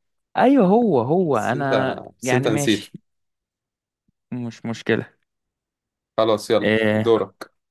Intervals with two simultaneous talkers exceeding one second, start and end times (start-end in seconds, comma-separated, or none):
1.3-2.9